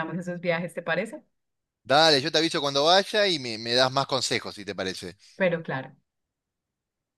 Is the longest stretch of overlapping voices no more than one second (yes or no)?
yes